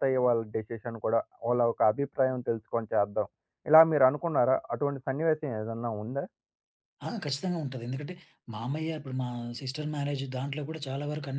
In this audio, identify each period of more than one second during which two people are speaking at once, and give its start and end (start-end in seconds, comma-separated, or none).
none